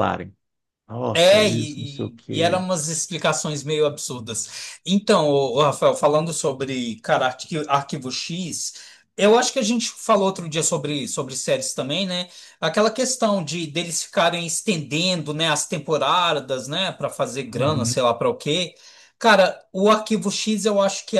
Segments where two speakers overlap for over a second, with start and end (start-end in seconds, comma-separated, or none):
1.2-2.6